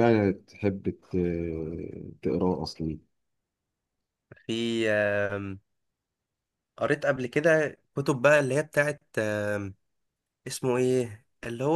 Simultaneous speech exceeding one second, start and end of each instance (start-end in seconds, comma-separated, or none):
none